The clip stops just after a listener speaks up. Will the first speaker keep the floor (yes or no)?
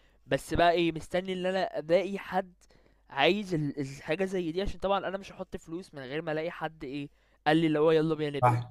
no